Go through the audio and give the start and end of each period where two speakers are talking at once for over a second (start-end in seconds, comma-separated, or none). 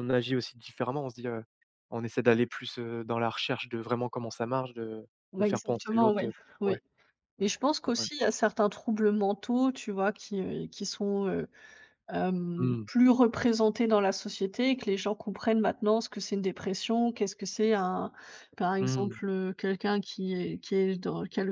5.3-6.8